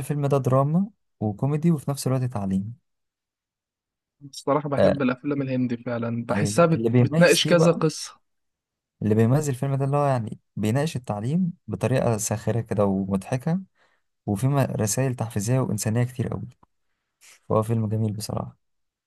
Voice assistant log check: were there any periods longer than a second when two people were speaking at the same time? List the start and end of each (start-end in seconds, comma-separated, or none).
6.3-7.8